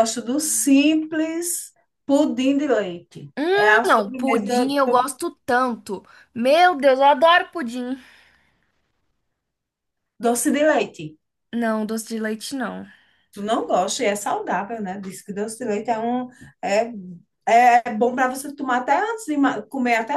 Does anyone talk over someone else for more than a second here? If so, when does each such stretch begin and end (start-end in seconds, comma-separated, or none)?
3.4-4.7